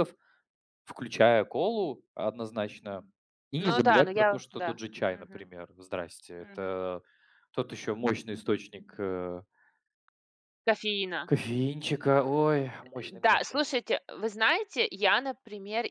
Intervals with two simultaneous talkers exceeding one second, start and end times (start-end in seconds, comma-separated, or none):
3.6-5.5